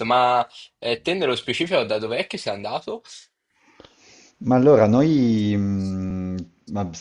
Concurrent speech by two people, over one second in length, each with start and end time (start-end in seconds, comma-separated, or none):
none